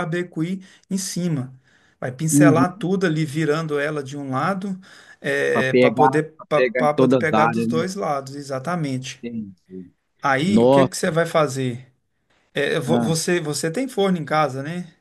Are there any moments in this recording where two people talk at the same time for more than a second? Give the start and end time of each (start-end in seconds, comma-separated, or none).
5.8-7.8